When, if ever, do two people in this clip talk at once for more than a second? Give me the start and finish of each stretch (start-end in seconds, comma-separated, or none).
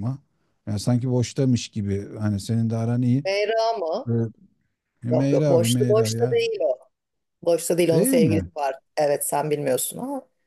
5.1-6.4